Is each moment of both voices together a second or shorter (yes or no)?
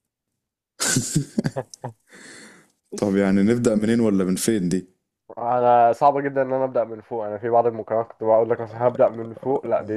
yes